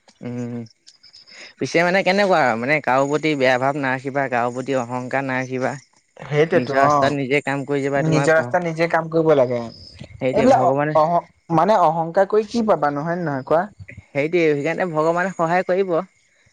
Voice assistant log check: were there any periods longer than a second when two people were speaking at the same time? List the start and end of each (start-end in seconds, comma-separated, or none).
6.5-8.3